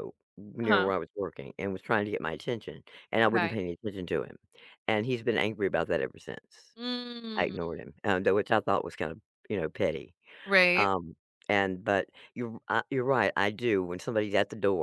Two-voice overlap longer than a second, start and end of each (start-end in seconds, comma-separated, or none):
none